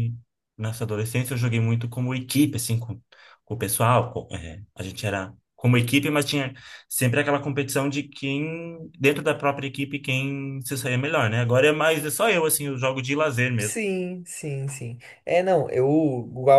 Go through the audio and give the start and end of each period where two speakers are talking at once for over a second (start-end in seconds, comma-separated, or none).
none